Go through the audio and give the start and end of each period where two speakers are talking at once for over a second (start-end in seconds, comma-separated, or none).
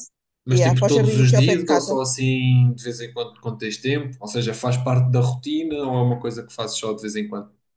0.5-2.0